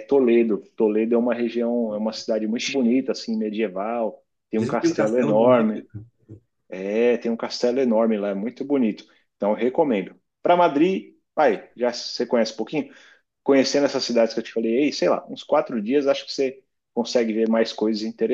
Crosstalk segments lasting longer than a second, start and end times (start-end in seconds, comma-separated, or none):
4.5-5.8